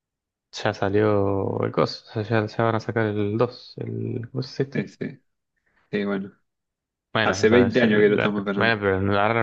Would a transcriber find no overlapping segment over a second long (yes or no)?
no